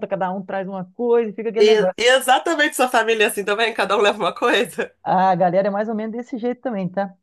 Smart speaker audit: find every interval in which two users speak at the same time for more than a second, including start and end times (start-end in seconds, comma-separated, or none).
none